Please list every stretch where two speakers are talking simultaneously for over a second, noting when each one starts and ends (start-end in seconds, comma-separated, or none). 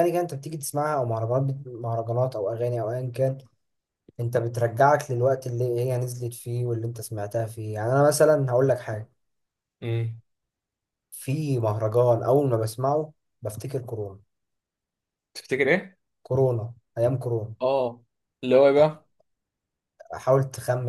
none